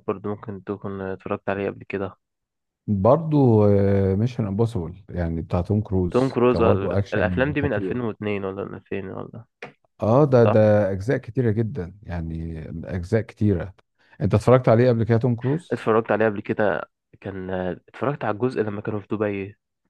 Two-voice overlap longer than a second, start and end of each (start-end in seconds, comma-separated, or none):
6.1-8.0